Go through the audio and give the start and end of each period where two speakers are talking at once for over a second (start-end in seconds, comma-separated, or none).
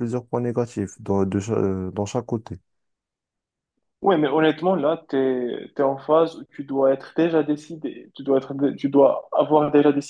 none